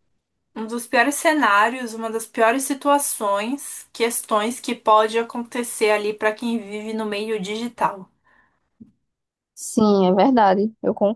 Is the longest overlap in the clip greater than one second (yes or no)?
no